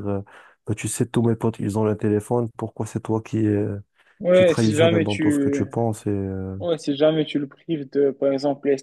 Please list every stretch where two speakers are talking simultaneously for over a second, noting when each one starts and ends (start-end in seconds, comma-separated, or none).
4.3-5.7